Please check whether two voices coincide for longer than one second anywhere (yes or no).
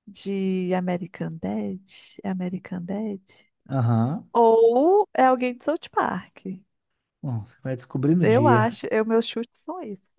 no